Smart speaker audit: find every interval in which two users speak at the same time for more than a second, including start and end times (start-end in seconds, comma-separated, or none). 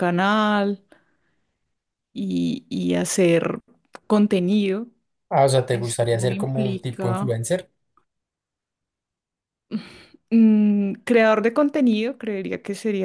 5.7-7.4